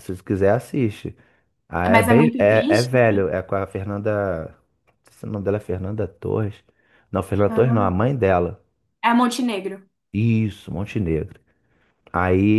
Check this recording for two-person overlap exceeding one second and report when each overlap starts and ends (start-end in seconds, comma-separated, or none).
1.9-3.3